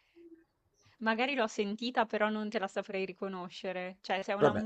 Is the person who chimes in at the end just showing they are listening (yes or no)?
yes